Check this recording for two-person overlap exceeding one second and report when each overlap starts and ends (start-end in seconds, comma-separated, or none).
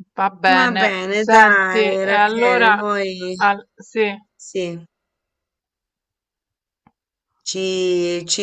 0.6-2.8